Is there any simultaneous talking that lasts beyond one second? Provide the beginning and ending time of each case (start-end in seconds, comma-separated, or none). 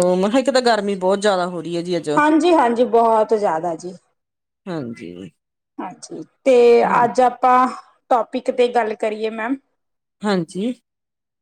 none